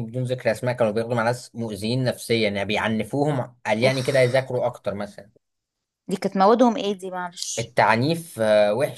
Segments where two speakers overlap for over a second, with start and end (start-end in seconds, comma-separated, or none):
none